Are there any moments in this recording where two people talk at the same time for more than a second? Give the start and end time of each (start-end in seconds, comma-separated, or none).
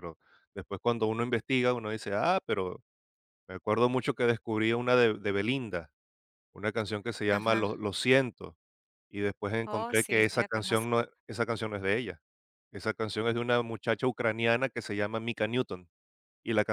9.7-11.0